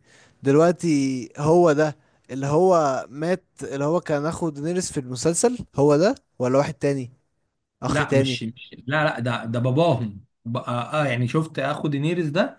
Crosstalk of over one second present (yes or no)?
no